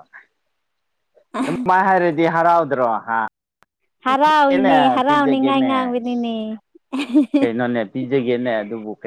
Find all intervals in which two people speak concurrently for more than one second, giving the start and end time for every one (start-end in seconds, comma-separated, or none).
4.0-6.2